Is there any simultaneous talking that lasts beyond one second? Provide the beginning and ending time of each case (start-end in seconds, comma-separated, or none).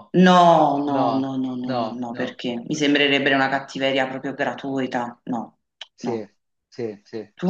0.9-2.4